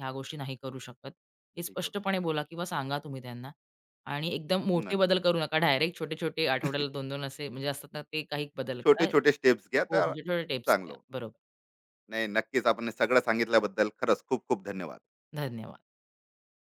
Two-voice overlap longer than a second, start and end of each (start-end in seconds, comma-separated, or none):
8.8-11.0